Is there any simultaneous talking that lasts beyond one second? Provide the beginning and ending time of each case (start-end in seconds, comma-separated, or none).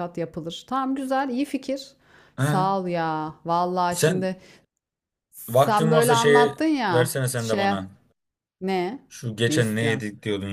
5.5-7.7